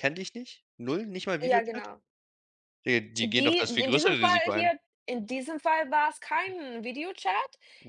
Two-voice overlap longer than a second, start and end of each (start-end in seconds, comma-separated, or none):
3.2-4.7